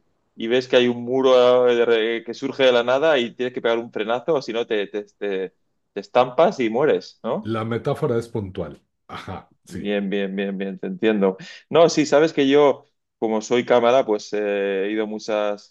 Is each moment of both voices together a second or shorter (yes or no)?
yes